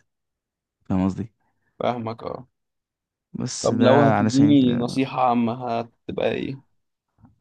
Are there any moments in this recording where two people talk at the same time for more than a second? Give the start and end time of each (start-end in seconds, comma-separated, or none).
3.6-4.8